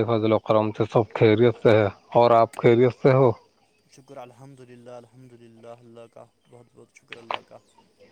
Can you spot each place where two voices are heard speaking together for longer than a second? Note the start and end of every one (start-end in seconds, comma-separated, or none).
none